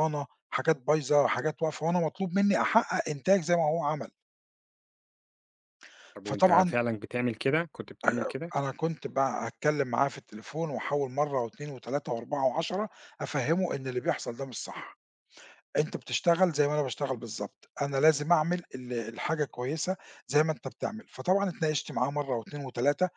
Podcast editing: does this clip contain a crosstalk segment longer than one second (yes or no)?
no